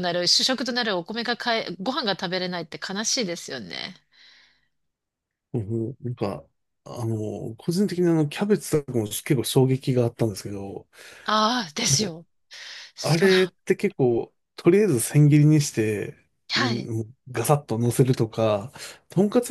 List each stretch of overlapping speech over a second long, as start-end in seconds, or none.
none